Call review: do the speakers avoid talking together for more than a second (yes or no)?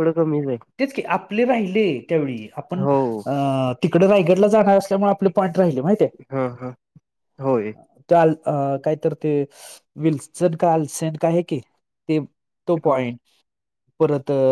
yes